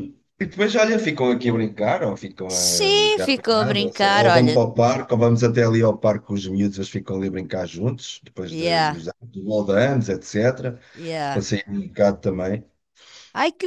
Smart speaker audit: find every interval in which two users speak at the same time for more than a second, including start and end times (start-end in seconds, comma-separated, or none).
2.5-4.6